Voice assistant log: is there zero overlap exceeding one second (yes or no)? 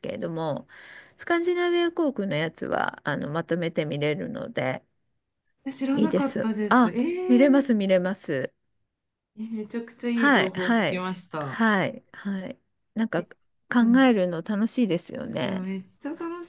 no